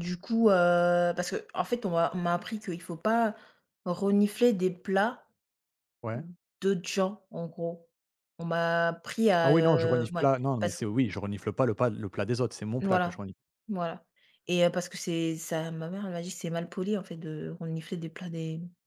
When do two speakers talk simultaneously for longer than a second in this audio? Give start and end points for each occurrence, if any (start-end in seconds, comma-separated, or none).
9.4-10.8